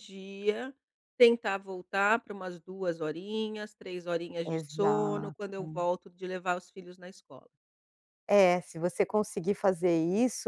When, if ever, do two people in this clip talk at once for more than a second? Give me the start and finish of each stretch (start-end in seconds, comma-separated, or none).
4.5-5.8